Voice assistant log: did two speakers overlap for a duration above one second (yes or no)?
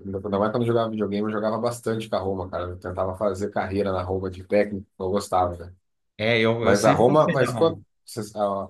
yes